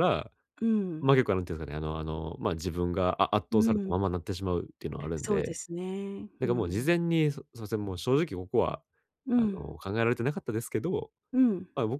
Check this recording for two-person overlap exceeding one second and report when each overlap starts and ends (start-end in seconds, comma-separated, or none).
none